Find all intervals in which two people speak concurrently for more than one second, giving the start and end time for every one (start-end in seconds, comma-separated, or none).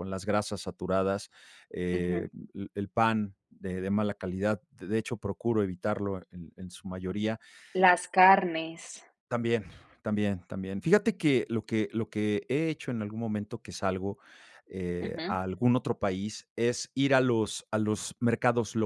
none